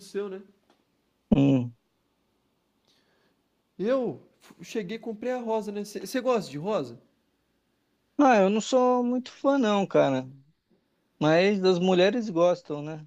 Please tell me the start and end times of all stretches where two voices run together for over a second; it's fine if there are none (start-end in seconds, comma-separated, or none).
none